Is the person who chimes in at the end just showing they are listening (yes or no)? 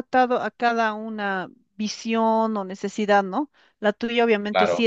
yes